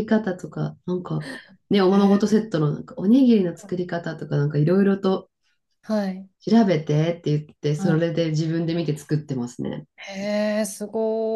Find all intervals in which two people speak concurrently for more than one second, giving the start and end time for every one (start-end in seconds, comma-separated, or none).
none